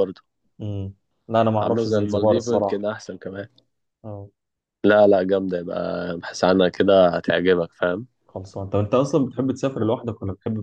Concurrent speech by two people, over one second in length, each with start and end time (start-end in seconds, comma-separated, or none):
1.6-2.8